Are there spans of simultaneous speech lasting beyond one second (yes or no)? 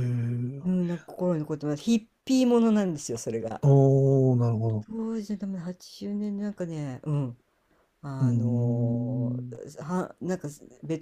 yes